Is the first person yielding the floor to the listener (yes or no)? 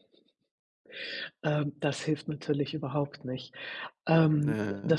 no